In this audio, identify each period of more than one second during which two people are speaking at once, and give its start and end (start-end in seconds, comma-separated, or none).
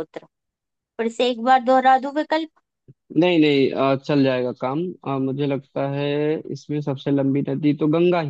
none